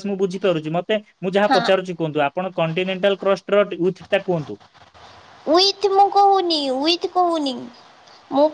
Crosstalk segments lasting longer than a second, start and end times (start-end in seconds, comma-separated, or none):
none